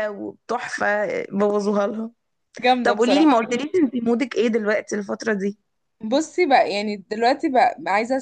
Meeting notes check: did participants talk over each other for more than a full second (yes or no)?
no